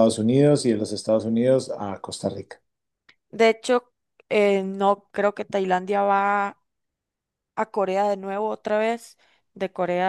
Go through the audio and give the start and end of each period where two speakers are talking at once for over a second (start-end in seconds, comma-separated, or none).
none